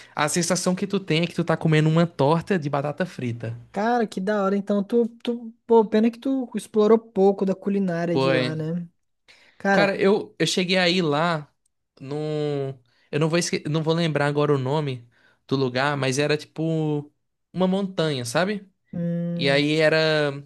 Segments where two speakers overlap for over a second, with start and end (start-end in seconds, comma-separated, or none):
none